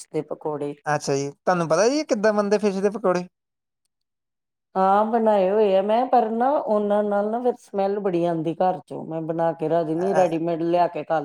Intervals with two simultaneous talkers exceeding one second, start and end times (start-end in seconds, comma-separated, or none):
none